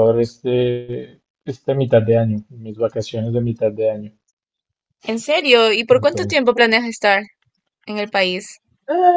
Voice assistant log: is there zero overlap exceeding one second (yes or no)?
yes